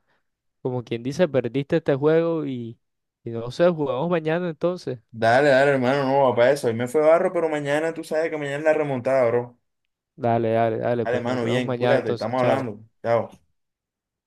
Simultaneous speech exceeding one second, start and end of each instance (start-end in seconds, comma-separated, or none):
11.0-12.7